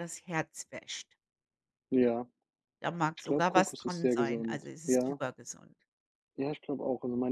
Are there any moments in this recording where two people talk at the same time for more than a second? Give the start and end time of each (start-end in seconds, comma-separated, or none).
3.1-5.2